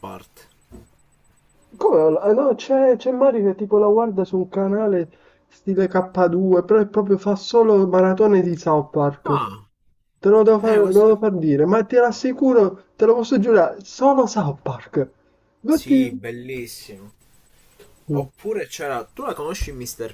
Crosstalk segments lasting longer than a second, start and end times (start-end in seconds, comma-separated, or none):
none